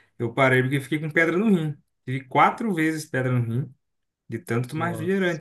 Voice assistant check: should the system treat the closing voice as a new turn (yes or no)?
no